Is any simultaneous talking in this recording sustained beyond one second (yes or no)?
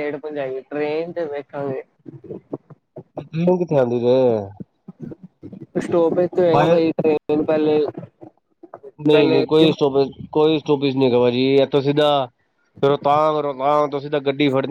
no